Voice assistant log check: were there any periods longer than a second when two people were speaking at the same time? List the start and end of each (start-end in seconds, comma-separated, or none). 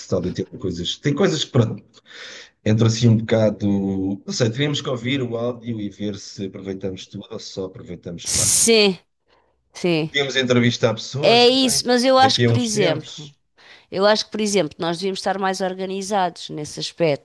11.2-13.3